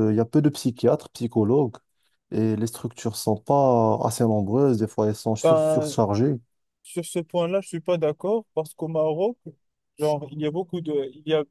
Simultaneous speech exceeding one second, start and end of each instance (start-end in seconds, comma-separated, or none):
none